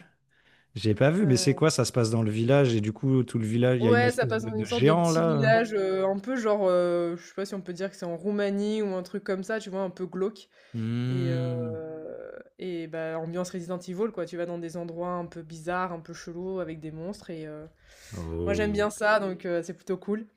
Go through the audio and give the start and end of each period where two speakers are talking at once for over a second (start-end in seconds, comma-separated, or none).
3.8-5.6